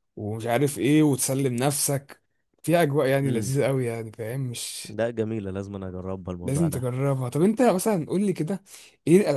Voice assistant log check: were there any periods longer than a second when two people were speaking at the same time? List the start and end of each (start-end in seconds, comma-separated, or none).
none